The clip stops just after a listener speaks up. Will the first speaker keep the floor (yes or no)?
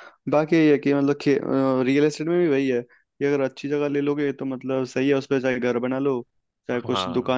yes